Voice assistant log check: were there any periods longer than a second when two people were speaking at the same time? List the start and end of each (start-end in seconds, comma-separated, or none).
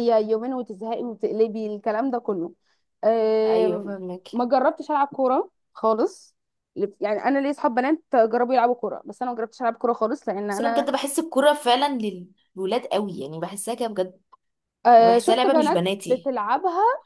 15.0-16.3